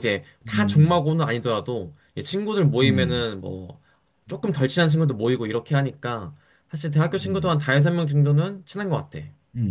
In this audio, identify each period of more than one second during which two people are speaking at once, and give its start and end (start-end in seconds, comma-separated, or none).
none